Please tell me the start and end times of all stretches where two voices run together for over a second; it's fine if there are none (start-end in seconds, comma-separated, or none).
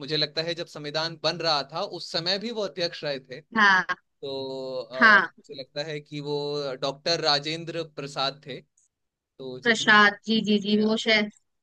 none